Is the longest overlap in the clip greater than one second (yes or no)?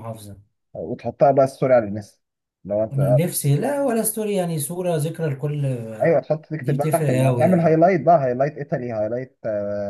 yes